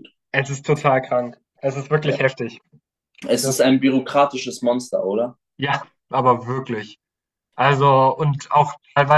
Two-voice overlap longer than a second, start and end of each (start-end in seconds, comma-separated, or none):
none